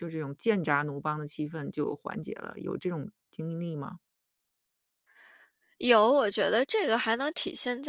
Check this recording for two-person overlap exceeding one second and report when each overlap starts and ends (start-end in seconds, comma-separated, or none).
none